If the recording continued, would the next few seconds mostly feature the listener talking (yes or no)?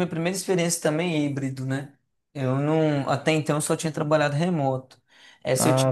no